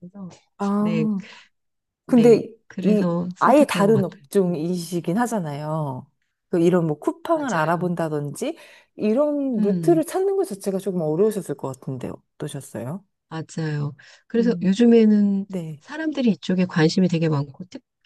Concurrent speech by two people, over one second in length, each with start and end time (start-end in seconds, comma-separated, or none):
2.0-4.6